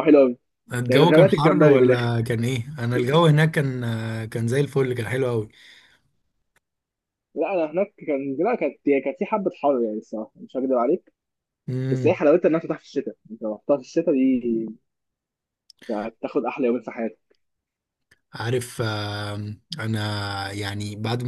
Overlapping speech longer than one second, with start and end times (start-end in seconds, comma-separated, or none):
0.9-2.1